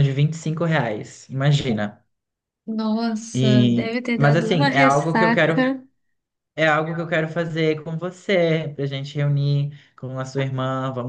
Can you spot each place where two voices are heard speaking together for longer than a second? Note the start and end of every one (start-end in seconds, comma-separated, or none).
3.3-5.7